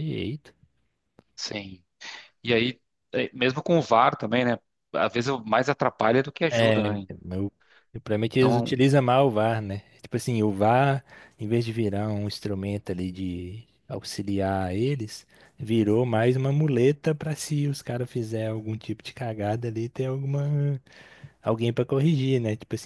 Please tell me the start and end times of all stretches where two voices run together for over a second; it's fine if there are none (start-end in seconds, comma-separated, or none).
none